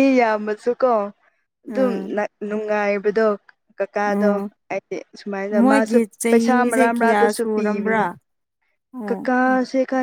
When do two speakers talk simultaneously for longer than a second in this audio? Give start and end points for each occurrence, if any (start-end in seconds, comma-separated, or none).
5.5-8.1